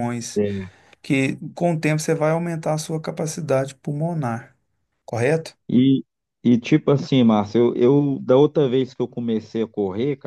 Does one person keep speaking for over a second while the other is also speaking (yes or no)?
no